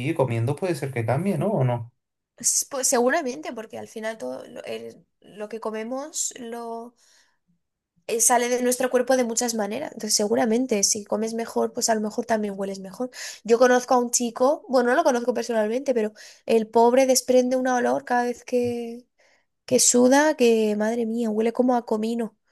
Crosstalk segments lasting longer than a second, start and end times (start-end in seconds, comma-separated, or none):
none